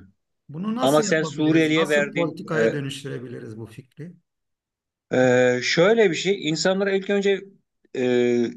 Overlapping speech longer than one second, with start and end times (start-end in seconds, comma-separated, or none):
0.8-2.7